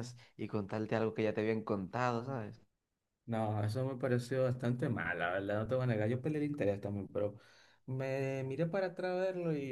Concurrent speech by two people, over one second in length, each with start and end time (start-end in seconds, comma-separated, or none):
none